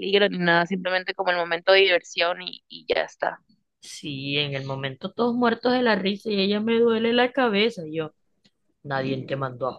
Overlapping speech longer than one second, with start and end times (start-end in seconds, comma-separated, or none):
none